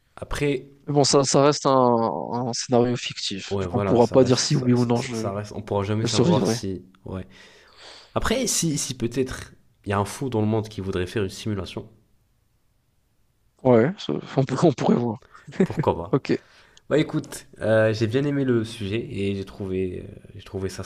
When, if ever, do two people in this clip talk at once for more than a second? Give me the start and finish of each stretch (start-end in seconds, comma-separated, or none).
3.5-5.3